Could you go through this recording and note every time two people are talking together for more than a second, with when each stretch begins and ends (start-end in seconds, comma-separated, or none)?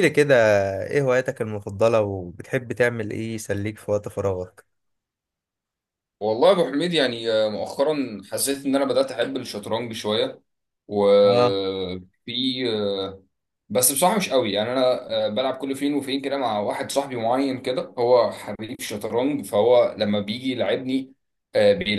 none